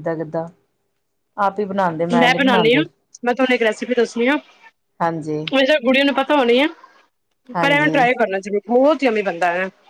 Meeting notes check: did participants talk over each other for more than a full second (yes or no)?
no